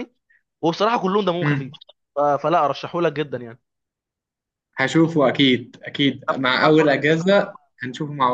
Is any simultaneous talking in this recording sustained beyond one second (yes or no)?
yes